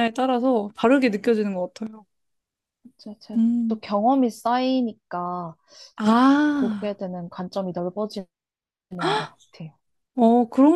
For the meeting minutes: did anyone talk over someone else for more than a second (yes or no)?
no